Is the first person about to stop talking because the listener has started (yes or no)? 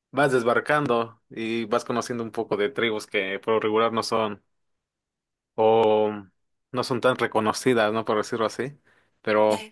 no